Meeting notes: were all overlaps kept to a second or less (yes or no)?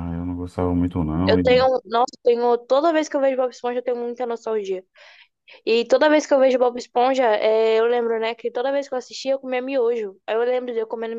yes